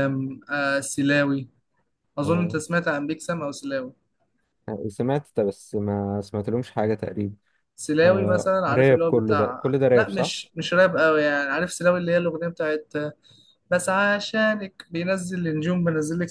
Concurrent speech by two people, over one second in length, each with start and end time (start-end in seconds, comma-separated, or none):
8.0-10.3